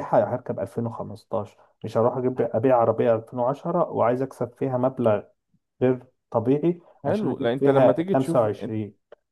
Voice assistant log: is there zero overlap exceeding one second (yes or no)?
no